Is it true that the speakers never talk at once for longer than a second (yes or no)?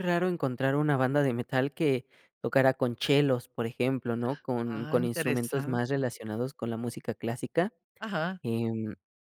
no